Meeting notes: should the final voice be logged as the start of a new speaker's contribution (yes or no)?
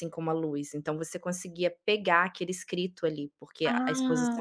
yes